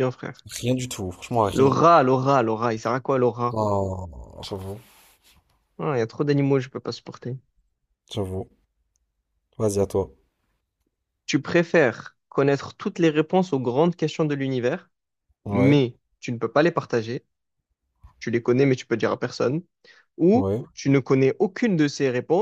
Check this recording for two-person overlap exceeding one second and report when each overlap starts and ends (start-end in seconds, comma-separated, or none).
none